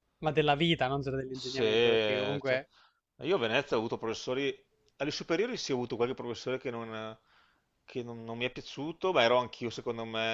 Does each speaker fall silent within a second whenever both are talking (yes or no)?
no